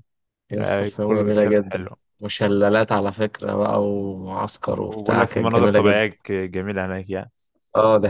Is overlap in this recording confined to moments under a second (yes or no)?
no